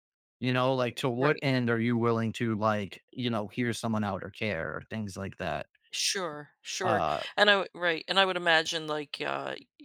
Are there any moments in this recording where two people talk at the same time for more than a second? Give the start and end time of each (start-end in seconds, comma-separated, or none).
none